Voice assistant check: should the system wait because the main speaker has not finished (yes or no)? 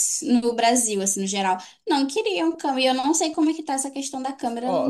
no